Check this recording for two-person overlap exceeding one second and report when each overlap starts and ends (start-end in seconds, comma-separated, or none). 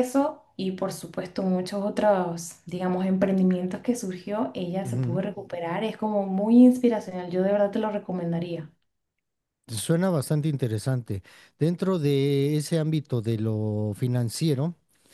none